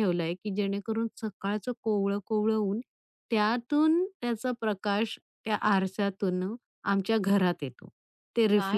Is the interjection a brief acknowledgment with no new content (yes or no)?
no